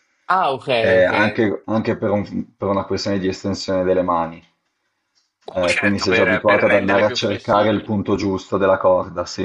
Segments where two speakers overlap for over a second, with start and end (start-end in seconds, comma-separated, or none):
5.5-7.9